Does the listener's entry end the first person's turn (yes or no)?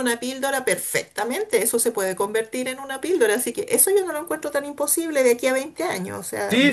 yes